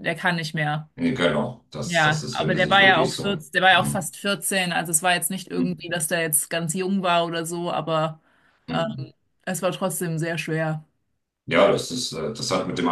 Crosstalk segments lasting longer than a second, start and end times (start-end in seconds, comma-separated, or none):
1.8-4.1